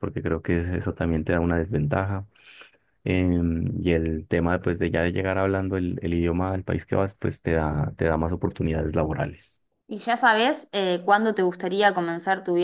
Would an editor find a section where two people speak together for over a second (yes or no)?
no